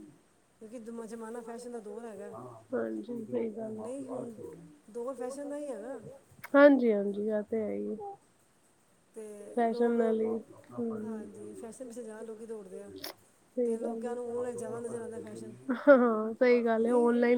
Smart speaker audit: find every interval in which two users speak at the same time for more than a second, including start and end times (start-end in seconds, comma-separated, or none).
none